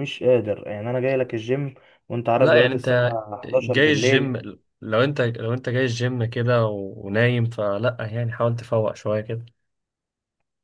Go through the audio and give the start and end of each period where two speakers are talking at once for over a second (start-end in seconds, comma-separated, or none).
2.4-4.4